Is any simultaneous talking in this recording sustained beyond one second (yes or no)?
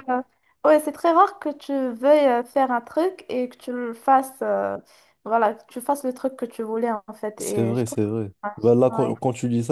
yes